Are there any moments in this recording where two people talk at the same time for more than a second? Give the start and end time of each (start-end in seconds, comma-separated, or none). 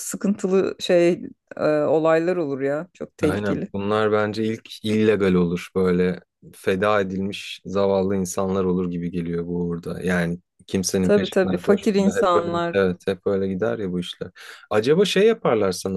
11.0-12.8